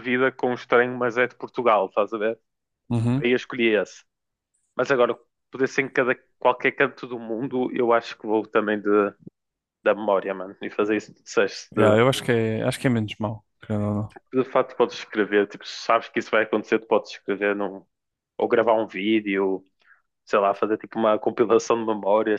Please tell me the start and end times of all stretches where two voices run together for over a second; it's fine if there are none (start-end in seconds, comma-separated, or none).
none